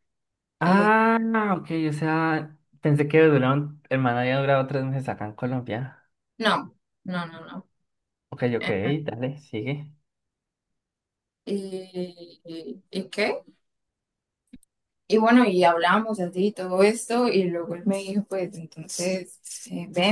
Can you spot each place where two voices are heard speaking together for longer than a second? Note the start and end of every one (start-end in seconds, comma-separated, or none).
none